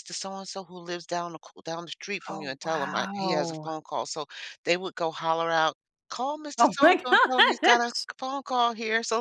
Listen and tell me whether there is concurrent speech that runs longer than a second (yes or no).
yes